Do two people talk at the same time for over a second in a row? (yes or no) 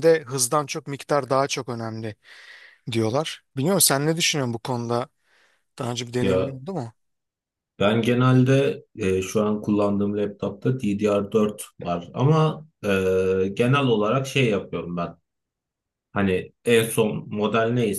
no